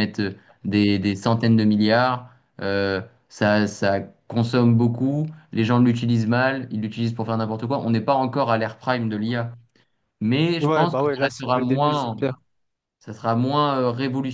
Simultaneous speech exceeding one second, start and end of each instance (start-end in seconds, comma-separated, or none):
10.6-12.2